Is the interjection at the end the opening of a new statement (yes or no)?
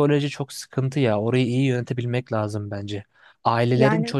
no